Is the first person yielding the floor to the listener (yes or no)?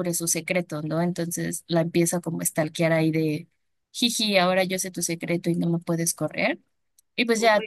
no